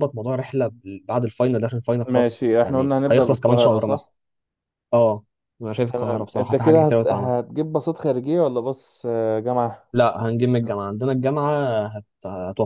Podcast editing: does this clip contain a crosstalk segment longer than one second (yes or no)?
yes